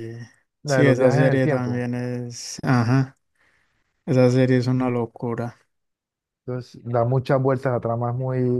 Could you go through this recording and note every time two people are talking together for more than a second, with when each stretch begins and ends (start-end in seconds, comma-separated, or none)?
0.6-1.9